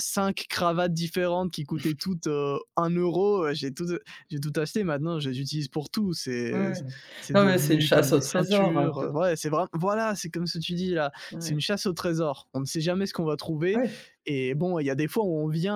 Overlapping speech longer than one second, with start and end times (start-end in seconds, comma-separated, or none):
7.3-9.1